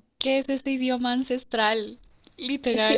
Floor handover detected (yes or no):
yes